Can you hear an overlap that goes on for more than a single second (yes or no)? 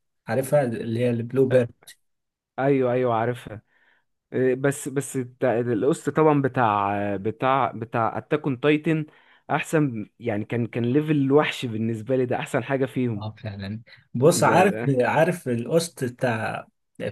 no